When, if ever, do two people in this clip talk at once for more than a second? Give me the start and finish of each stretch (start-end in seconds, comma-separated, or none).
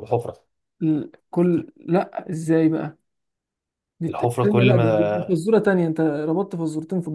4.1-5.4